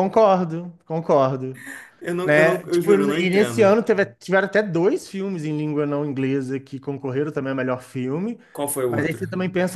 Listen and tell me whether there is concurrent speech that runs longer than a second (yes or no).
yes